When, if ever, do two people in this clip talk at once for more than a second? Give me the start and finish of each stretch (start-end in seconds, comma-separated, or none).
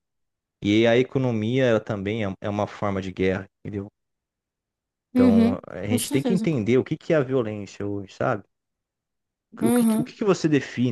5.1-6.5